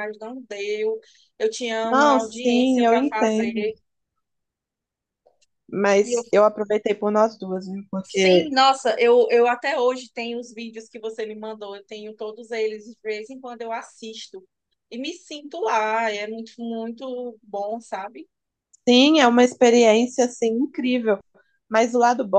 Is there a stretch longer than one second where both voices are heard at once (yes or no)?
yes